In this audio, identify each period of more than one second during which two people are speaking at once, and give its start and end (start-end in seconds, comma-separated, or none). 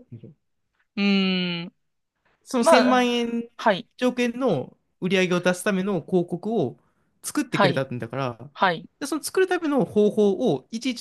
2.6-3.9